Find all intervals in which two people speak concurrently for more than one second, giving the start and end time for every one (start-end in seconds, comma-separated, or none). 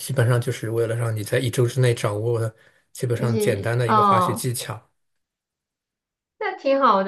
3.1-4.4